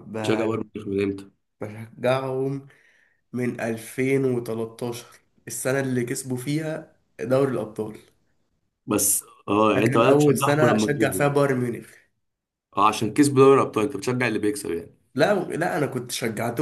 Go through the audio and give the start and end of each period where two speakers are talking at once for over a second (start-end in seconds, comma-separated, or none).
9.8-11.2